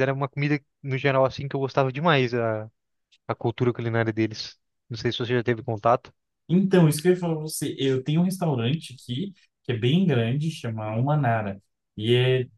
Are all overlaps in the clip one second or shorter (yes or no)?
yes